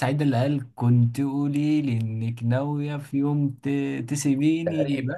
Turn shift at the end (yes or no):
yes